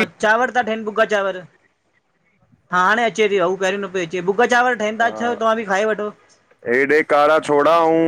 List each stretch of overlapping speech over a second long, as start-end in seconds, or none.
none